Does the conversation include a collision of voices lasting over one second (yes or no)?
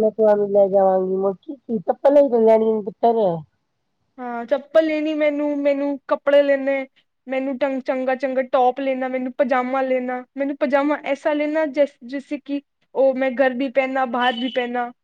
no